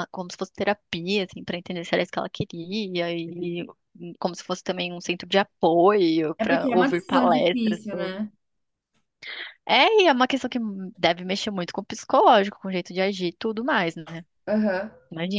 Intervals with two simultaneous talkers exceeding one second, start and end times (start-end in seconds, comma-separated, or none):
6.4-7.8